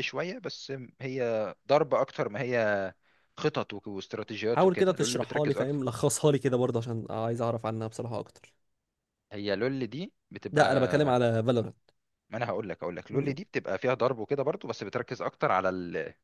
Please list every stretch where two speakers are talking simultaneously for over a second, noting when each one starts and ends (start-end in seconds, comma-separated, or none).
4.5-5.8